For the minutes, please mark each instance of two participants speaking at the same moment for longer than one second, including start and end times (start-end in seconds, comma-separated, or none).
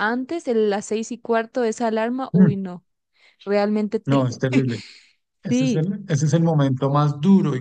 none